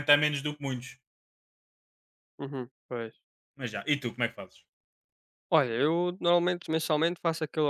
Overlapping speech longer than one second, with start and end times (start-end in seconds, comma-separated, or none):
none